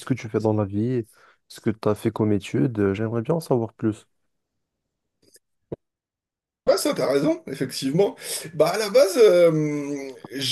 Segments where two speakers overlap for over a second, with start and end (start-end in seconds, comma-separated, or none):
none